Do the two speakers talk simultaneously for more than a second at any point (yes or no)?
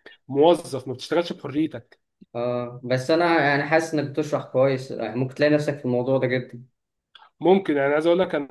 no